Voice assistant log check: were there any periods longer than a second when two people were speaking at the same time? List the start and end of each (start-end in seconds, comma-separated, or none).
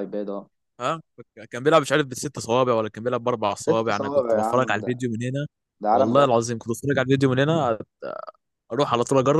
3.5-4.9